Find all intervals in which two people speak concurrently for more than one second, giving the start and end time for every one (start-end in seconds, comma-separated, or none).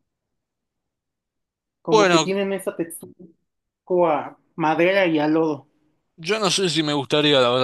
none